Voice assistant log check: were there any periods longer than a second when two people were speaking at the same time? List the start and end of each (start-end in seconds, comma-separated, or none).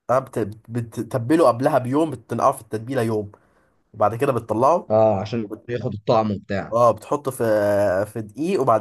none